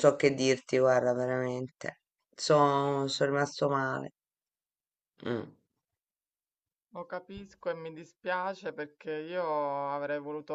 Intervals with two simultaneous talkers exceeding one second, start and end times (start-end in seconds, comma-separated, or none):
none